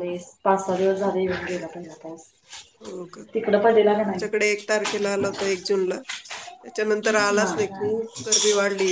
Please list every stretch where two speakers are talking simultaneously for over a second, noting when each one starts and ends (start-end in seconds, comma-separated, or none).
none